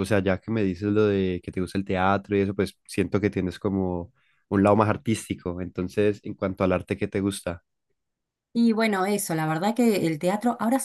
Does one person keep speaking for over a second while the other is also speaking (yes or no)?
no